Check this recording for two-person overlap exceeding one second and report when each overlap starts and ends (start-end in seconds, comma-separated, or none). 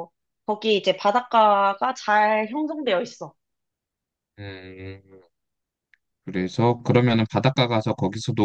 none